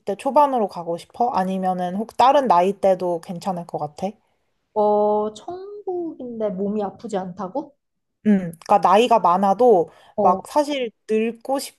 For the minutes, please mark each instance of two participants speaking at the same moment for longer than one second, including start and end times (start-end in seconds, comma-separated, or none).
none